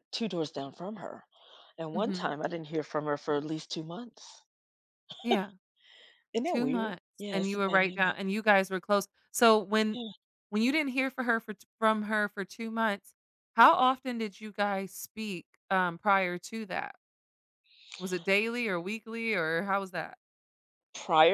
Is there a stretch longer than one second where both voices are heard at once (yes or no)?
yes